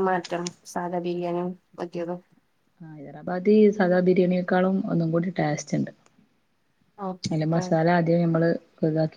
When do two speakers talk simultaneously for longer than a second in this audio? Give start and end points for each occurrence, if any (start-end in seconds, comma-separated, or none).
none